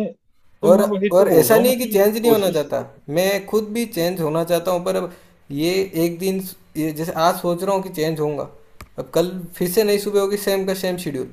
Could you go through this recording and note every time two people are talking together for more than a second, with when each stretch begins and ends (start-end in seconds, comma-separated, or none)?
0.7-2.8